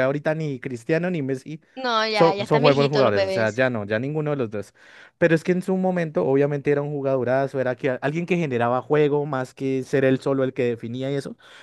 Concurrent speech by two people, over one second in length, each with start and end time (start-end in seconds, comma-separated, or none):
2.1-3.6